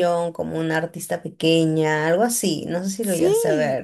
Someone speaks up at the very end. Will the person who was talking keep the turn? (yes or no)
no